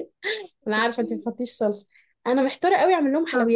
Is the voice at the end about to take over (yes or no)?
no